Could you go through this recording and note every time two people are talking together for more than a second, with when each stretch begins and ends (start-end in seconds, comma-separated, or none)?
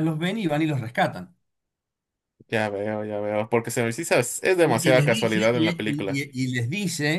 4.6-6.2